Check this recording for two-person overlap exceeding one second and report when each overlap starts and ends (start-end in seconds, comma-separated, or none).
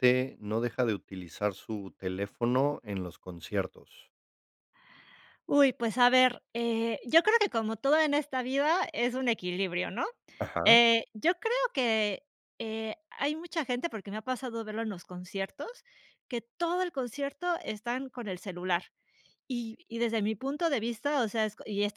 none